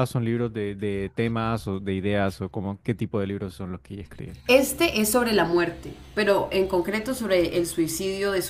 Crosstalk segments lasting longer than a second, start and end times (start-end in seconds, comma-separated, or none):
none